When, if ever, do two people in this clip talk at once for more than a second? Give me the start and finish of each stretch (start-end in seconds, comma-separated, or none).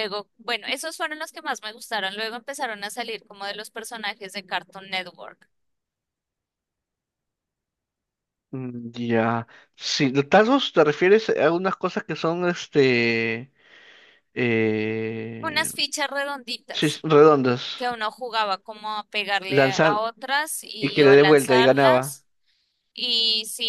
20.8-22.2